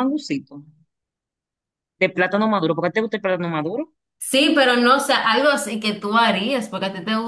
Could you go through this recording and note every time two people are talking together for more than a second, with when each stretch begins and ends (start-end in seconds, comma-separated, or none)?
none